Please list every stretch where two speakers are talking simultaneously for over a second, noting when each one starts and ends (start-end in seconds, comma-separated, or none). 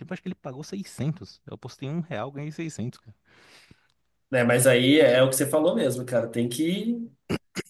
none